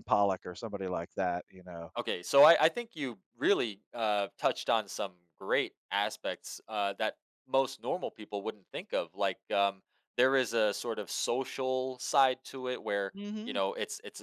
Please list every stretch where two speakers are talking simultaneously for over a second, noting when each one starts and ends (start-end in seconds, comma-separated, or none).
none